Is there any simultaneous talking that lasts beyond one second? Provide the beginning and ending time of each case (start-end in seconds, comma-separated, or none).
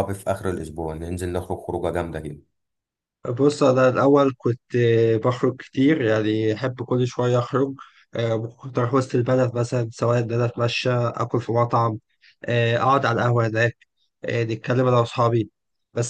none